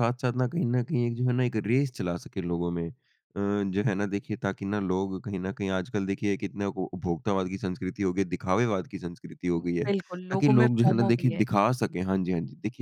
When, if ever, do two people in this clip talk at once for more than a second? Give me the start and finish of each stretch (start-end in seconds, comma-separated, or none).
9.6-11.4